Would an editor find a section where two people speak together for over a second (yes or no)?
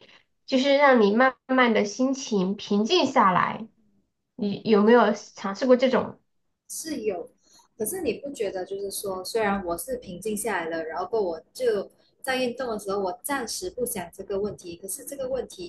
no